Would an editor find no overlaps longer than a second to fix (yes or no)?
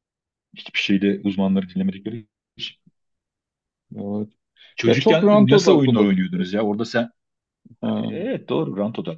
no